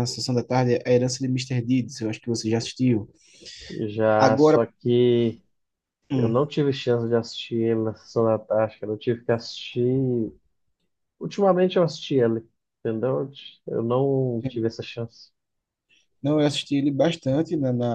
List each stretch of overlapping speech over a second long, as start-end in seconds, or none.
none